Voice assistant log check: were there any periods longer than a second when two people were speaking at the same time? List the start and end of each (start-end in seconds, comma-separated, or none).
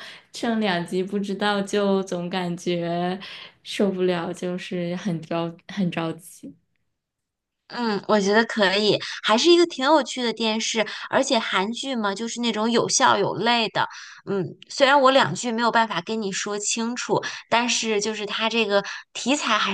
none